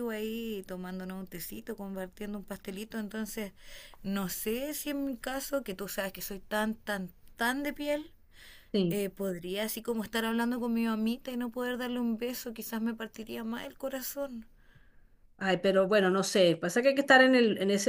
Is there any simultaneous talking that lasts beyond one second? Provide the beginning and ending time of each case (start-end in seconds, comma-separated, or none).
none